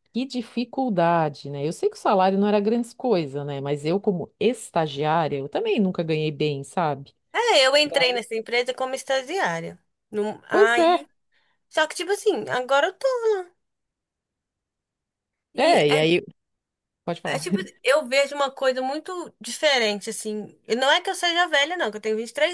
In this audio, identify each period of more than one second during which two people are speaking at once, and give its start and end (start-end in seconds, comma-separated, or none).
none